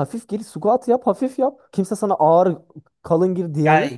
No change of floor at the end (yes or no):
no